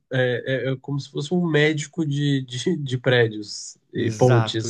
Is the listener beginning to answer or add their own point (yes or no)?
yes